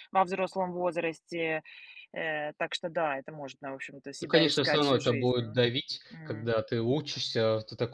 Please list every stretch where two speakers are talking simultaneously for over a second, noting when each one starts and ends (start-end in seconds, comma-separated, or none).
4.2-5.4